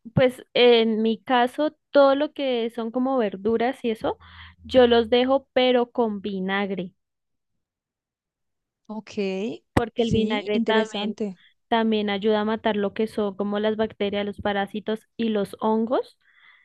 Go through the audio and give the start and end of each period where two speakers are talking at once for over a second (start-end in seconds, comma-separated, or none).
9.9-11.2